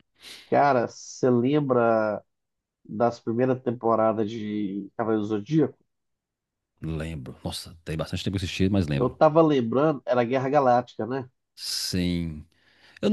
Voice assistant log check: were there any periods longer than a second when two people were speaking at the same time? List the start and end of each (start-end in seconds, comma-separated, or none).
none